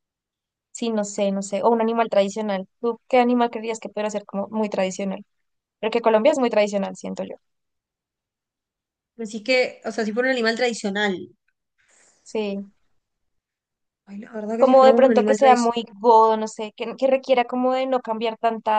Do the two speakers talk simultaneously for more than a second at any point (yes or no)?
yes